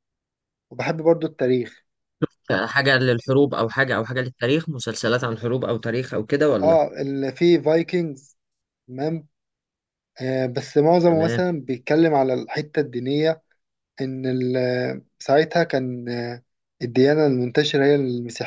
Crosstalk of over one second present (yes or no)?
no